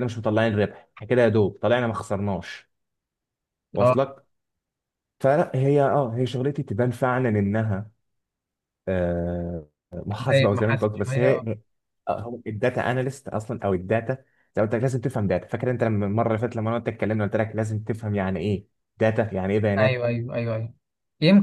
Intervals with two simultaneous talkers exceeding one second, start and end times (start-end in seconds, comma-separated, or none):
10.2-11.5